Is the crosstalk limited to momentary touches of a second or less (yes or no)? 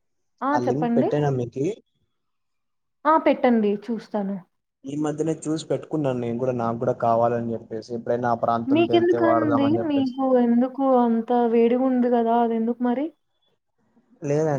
no